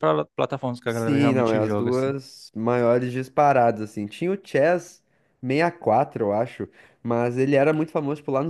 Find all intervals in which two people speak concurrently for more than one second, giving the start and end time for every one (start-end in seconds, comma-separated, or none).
0.8-2.1